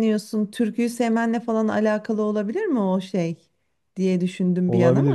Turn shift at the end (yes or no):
yes